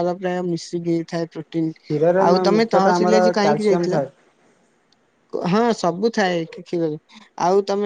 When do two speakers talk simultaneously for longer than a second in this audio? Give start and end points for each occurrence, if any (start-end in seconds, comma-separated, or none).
2.3-4.0